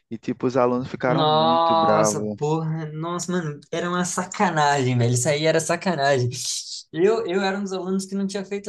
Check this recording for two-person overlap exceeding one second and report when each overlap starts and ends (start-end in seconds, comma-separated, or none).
1.0-2.4